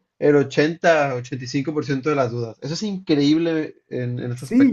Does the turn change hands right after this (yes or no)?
yes